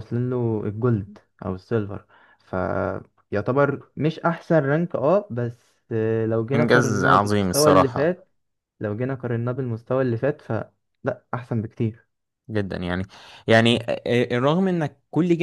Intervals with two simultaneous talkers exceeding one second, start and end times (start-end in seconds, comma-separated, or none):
6.5-8.2